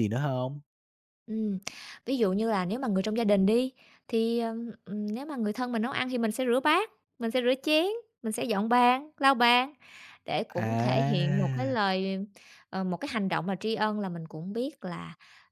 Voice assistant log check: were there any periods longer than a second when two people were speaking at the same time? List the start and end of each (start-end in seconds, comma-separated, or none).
10.6-11.8